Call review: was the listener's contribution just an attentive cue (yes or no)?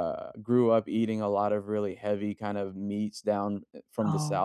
yes